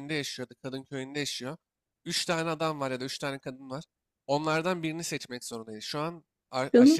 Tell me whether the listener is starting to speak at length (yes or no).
no